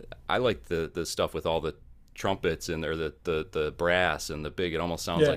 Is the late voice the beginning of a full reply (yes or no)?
no